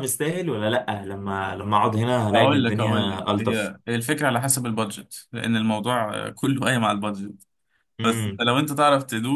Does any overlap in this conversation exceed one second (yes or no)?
yes